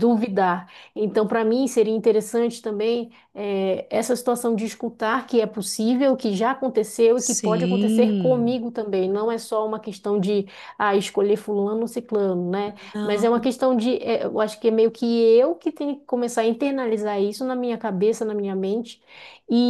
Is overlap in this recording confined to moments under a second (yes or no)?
no